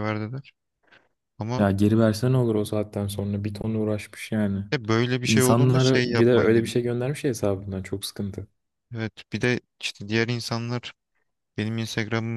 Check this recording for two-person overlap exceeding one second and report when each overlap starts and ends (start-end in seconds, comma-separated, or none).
5.2-6.7